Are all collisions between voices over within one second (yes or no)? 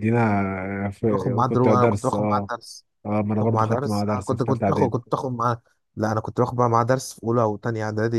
no